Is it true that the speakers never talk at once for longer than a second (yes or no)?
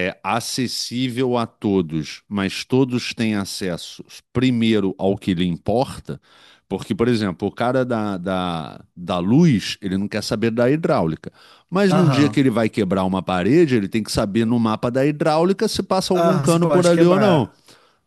no